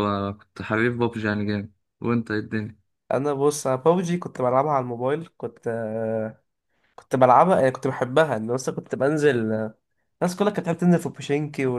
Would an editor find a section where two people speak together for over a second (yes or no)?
no